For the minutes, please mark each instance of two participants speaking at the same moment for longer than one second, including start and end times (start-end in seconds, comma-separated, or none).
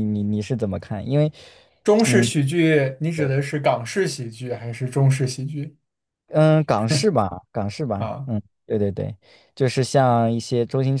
none